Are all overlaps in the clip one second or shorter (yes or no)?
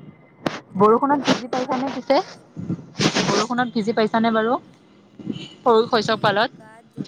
no